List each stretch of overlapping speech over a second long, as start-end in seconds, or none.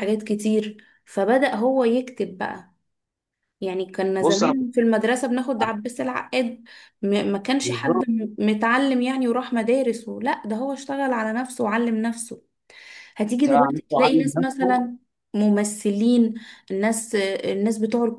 13.3-14.8